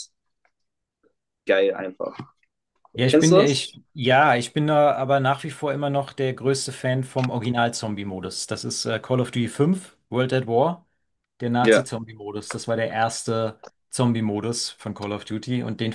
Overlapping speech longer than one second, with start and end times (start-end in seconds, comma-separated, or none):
none